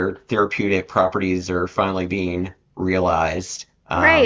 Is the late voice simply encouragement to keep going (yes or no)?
no